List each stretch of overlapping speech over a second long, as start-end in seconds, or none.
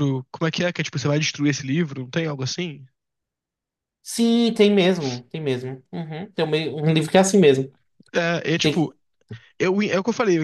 none